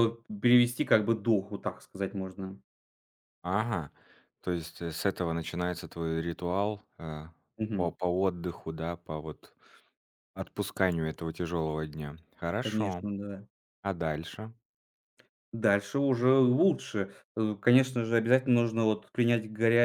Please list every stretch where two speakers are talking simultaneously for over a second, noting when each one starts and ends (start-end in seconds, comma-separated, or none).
none